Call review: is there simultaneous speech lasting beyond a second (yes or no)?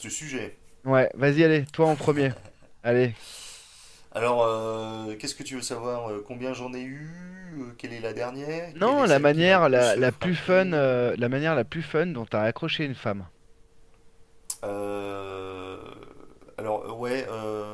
yes